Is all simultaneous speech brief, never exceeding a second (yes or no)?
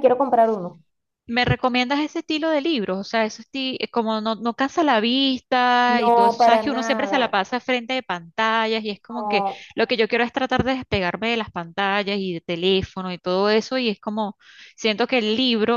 no